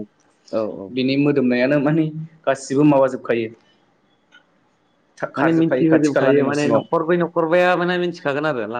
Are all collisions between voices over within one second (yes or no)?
no